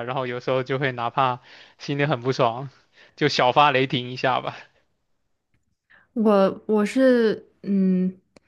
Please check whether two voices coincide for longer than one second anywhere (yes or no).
no